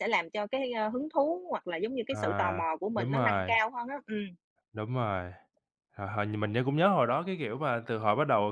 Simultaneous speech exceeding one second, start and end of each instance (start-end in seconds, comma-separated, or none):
2.1-3.5